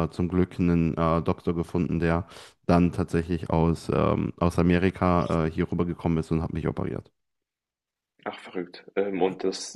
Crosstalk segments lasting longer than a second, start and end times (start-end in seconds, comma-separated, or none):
none